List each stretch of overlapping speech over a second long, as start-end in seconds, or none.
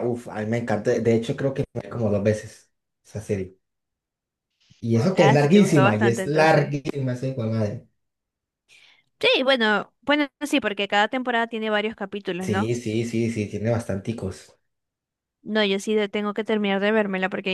5.2-6.8